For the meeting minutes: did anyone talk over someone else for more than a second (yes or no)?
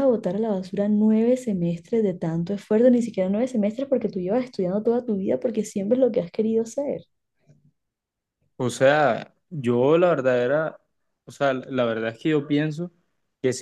no